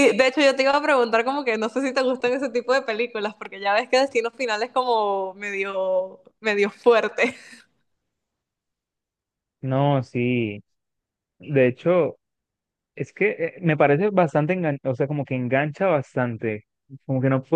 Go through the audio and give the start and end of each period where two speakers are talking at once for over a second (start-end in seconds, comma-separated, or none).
none